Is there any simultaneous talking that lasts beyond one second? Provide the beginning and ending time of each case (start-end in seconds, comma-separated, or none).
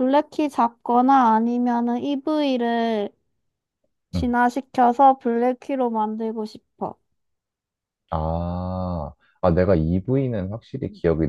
none